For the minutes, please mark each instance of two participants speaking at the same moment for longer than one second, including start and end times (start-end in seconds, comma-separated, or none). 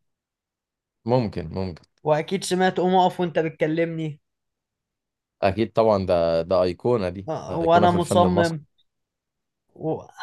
7.3-8.6